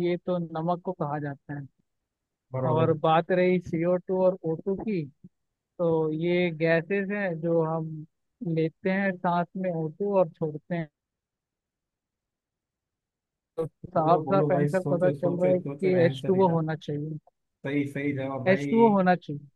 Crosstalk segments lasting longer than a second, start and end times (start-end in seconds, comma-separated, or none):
14.0-16.6